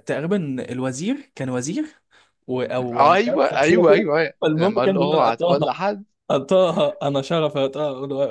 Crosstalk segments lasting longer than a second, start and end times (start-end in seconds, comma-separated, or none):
2.9-5.6